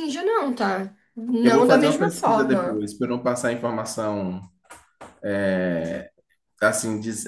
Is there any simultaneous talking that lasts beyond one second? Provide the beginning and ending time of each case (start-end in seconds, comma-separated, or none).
1.4-2.9